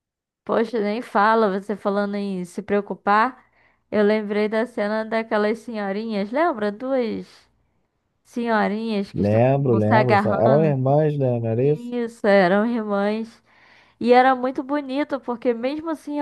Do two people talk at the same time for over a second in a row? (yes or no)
yes